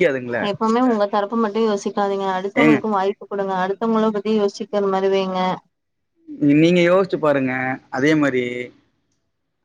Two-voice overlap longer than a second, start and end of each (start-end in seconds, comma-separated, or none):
none